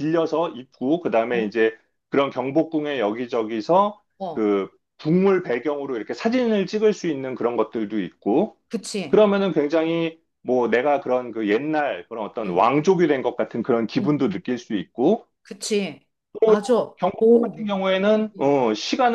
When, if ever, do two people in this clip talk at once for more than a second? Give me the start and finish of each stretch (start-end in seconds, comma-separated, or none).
none